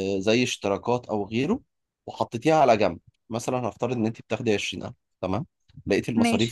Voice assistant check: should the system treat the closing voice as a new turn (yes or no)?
no